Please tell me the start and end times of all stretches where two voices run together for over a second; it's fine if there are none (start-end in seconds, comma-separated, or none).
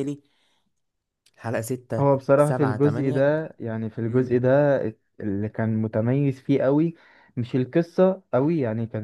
2.0-3.3